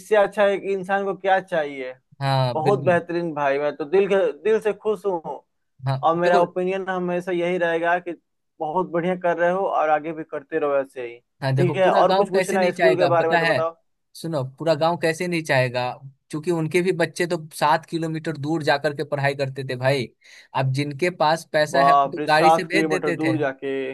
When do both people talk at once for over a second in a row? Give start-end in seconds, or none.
11.6-13.5, 21.8-23.3